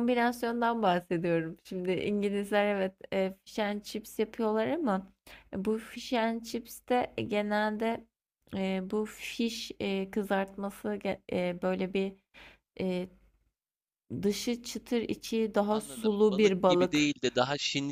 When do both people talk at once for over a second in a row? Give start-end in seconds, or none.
15.7-17.1